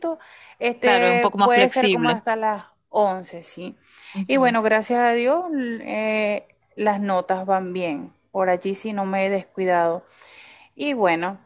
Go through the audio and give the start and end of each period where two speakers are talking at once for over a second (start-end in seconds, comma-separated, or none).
0.8-2.2